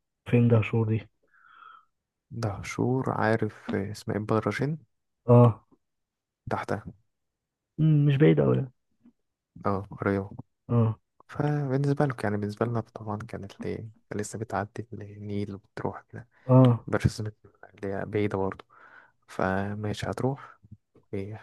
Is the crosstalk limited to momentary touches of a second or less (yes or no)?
yes